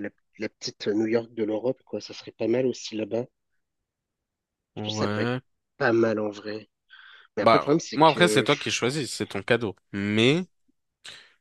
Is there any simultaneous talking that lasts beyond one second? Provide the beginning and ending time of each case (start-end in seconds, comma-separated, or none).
7.4-8.8